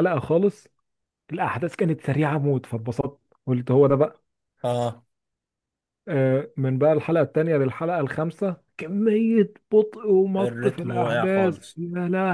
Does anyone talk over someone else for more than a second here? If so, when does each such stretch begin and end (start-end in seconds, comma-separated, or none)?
10.4-11.8